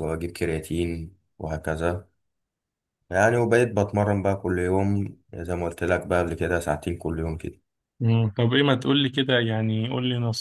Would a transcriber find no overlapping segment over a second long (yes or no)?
yes